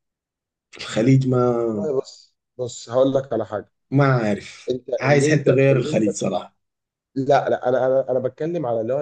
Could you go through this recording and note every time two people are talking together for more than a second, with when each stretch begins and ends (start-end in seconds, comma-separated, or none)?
4.7-6.1